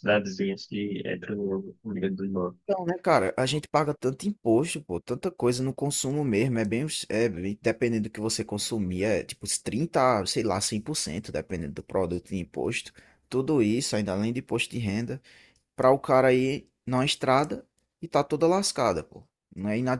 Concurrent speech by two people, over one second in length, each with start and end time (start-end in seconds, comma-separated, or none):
none